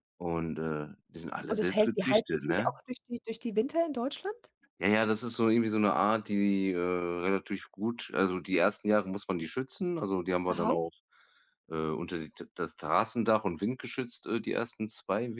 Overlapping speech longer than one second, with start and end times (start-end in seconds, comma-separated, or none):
1.5-2.7